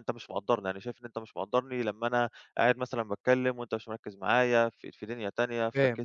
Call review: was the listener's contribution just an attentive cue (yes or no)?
no